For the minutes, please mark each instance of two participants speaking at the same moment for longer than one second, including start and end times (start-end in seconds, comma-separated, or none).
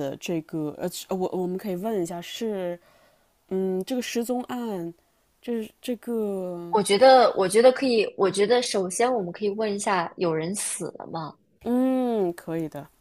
none